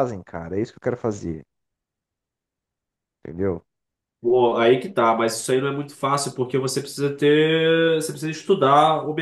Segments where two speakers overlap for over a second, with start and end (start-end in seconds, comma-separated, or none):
none